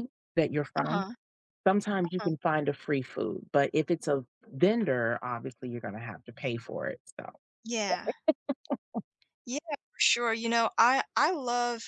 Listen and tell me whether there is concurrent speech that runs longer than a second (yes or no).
no